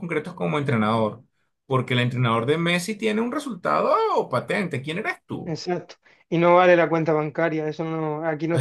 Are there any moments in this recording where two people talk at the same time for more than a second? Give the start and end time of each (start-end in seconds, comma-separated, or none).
none